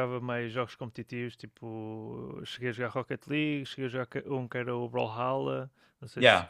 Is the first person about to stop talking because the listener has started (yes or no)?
yes